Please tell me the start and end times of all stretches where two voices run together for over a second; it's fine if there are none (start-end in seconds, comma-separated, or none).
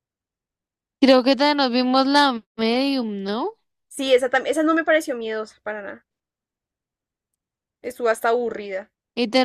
none